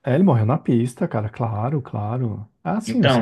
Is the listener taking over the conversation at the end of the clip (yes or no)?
yes